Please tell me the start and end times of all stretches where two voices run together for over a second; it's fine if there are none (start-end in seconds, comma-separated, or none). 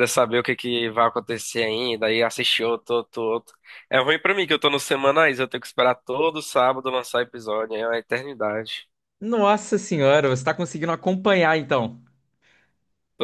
none